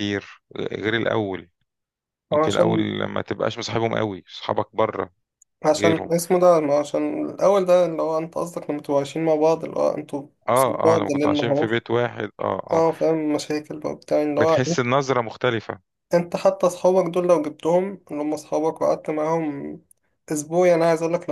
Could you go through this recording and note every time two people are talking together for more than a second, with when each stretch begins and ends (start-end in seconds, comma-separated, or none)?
10.5-11.8